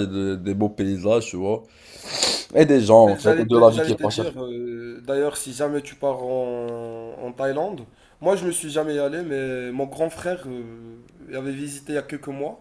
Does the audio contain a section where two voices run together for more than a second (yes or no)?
yes